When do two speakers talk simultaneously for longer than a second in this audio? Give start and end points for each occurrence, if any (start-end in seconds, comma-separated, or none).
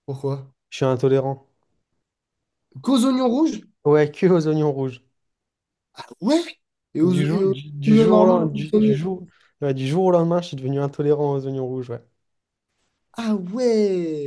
7.0-9.0